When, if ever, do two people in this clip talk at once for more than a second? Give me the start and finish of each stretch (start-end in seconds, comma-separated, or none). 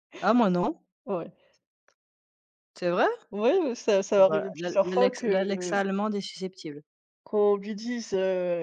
4.2-5.5